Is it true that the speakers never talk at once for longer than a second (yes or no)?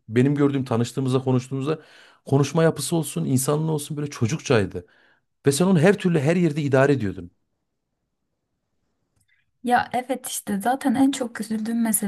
yes